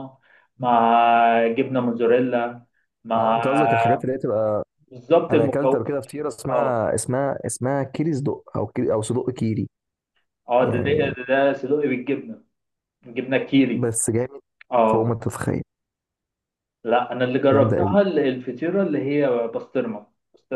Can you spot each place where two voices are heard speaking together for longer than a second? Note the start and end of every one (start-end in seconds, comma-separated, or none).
none